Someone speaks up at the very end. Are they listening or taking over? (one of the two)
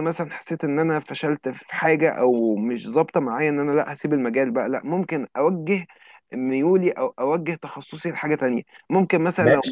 taking over